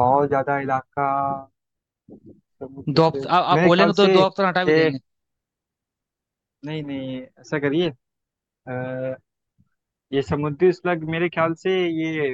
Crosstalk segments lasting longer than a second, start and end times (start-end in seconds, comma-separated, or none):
2.9-4.9